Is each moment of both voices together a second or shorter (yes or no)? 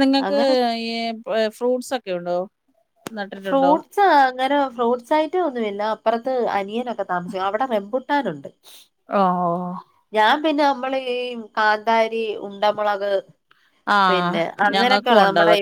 yes